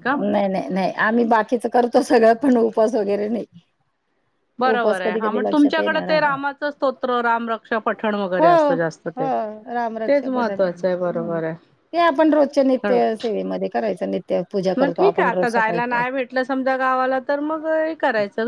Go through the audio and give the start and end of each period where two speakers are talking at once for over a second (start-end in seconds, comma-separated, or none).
4.7-6.3, 10.1-11.4, 14.8-16.0